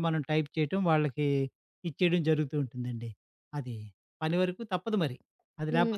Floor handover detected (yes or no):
yes